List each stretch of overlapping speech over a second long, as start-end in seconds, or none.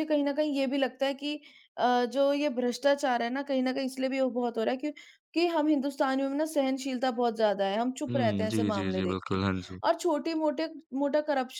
8.1-9.4